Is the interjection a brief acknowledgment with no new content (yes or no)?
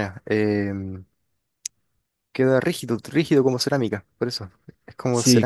no